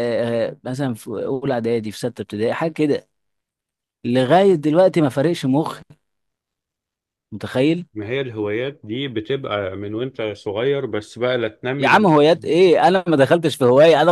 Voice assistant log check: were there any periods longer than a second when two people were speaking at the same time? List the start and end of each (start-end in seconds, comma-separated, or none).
none